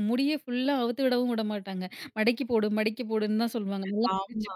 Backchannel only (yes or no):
yes